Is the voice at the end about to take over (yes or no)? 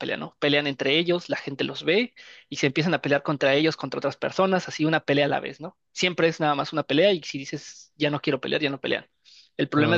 no